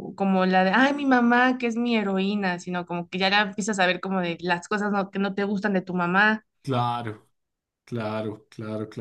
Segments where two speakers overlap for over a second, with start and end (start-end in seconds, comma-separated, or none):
none